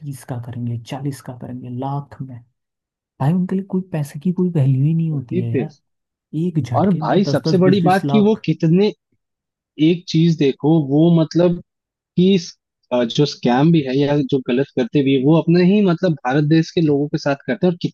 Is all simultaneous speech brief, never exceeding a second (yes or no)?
no